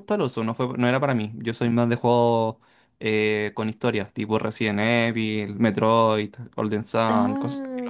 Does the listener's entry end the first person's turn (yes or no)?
yes